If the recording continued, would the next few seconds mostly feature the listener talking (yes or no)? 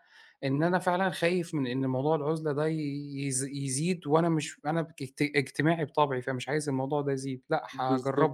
yes